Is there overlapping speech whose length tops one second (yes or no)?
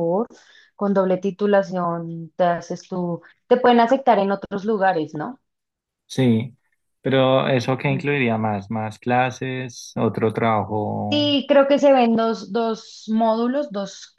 no